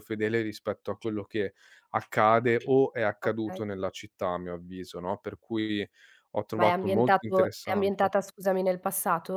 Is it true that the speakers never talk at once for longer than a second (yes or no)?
no